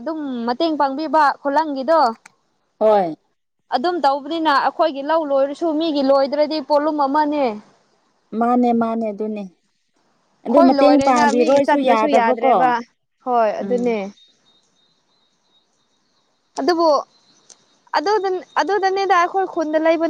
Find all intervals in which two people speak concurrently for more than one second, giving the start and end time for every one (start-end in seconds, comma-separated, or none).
10.5-12.6